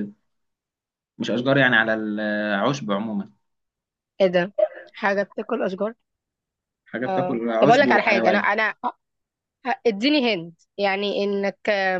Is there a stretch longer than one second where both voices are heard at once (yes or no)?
yes